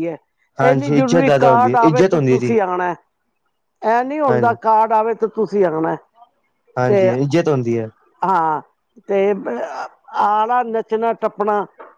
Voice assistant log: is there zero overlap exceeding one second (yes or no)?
no